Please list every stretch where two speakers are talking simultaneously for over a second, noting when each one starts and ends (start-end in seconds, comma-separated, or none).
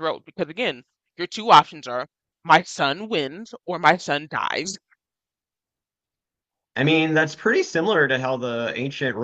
none